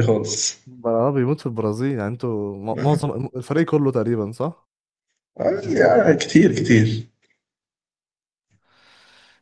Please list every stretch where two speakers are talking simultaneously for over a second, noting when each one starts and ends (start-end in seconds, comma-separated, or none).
none